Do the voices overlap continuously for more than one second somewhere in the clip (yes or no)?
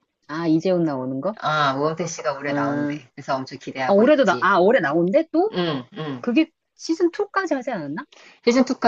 no